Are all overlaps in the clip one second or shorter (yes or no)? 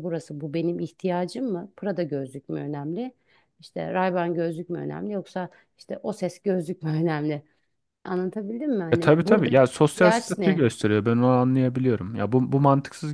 no